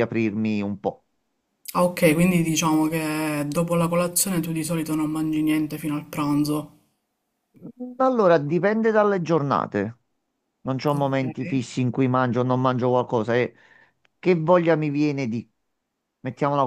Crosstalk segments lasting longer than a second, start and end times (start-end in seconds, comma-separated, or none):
none